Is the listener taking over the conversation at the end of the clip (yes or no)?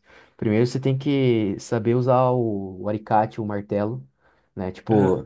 no